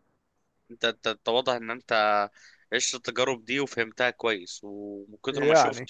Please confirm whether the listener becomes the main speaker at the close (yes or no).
no